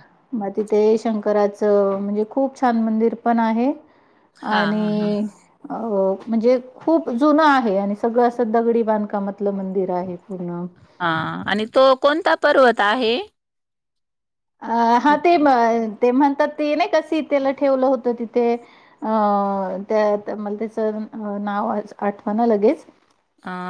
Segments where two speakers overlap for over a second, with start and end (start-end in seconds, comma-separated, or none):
none